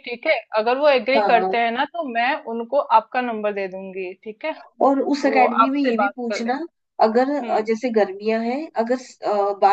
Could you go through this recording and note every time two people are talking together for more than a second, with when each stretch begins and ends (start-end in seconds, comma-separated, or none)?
5.0-6.6